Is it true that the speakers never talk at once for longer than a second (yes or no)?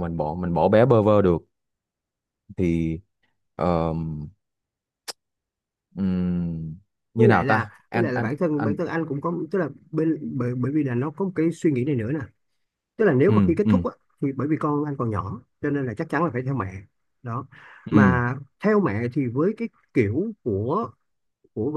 no